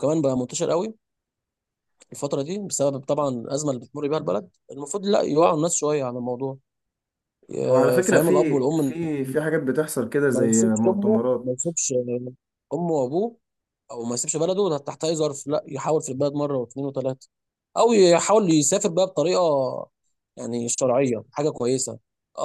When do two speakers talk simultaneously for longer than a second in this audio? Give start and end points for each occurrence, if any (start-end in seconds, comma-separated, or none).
7.7-9.0, 10.3-11.6